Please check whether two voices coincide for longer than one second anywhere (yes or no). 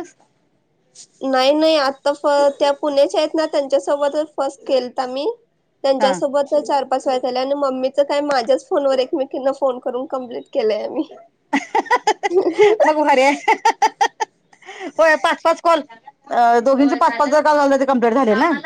no